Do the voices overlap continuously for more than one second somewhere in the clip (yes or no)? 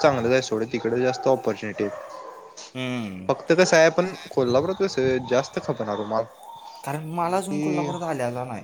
no